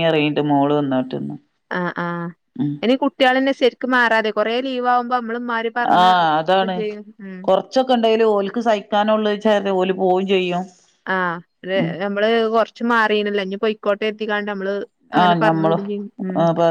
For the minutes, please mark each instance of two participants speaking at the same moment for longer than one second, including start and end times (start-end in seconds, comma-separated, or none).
none